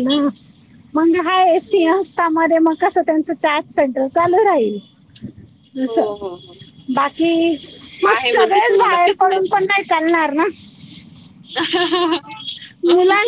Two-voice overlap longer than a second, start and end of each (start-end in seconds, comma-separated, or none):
8.1-9.6